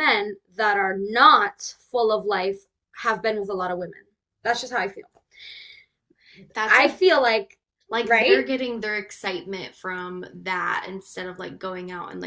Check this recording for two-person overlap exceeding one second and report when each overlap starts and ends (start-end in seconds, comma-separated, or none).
none